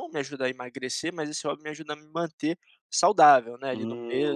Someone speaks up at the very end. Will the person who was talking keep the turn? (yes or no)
no